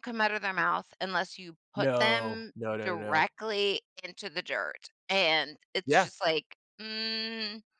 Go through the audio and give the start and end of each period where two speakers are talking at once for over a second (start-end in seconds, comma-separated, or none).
1.8-3.3